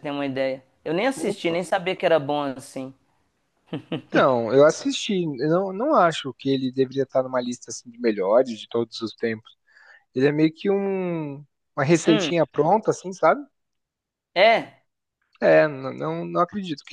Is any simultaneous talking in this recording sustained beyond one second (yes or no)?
no